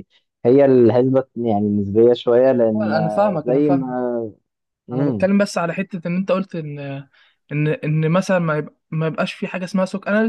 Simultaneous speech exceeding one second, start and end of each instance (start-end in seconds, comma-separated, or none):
2.8-4.0